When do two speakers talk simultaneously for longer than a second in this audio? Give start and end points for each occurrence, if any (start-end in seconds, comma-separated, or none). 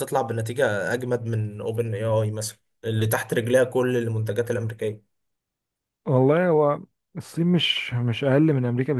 none